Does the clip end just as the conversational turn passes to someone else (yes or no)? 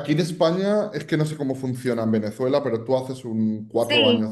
yes